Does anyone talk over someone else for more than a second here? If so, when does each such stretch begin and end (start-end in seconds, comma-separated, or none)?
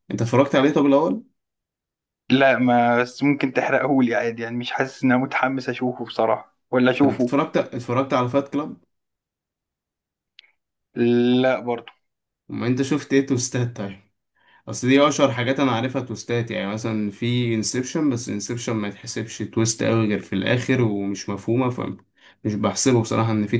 none